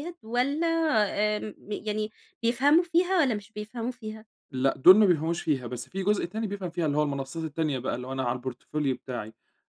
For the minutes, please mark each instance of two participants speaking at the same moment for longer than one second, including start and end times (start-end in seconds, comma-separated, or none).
none